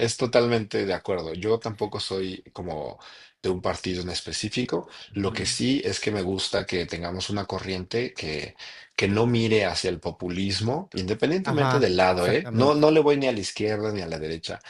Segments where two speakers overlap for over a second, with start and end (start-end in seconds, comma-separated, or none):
11.4-12.9